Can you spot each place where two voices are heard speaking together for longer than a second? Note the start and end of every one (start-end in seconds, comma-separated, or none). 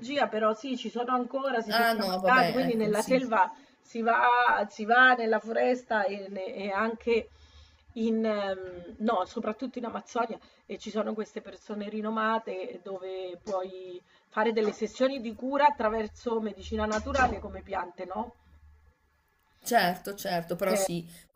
1.7-3.2